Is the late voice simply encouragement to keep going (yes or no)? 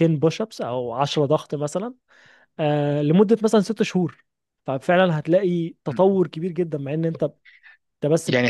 no